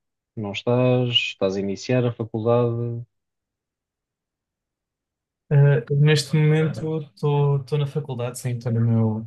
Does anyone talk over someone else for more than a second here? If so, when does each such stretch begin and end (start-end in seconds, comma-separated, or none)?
none